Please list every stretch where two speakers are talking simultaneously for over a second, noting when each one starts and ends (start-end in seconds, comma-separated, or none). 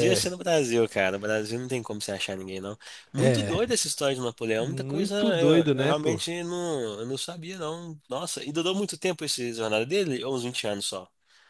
4.6-6.2